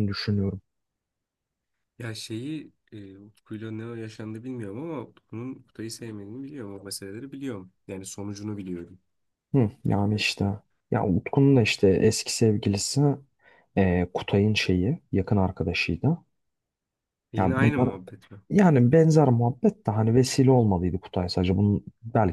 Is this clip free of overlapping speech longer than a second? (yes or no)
yes